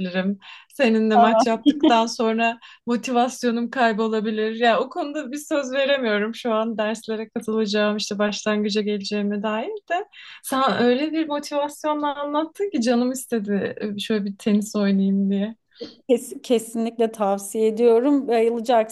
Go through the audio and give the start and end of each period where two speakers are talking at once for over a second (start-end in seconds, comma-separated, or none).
none